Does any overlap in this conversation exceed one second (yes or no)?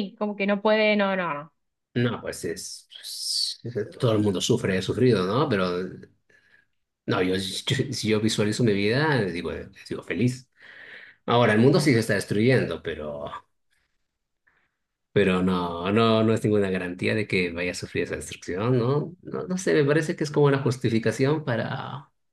no